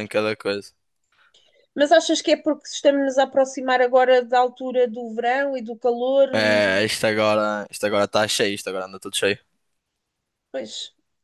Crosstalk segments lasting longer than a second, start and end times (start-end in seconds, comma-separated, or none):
none